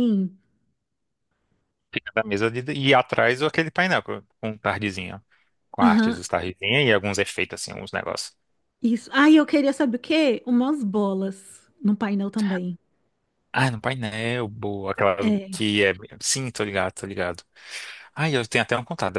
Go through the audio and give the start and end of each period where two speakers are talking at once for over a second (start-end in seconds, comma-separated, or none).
none